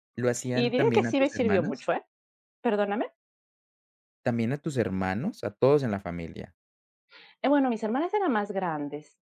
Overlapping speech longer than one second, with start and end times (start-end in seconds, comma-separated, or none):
0.5-1.8